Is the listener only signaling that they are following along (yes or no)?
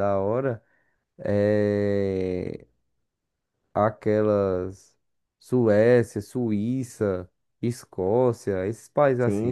no